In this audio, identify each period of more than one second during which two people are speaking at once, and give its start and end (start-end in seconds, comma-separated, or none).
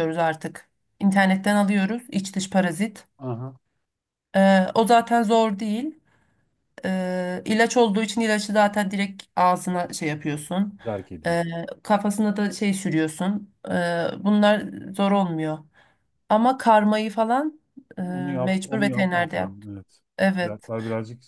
18.5-19.7